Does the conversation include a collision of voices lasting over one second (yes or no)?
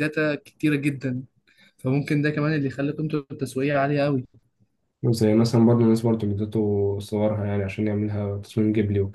no